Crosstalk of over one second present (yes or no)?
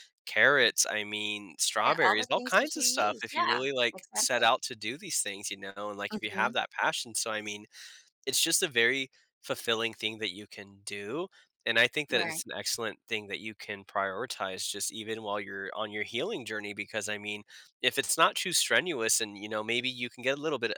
yes